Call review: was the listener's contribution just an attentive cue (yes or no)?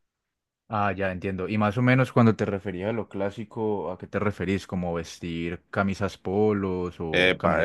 no